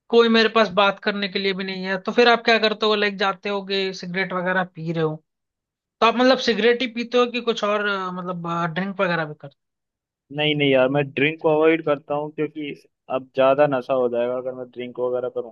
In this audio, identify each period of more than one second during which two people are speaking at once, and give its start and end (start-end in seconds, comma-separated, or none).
none